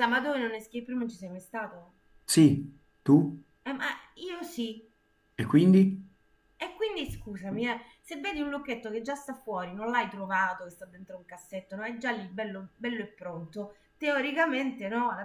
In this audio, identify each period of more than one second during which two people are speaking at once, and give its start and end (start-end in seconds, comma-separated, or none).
none